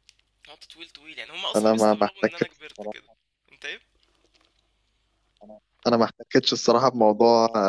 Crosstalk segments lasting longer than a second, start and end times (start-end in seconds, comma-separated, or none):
1.6-3.1